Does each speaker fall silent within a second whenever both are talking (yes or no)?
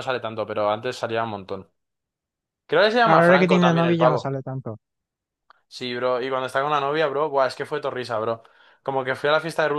no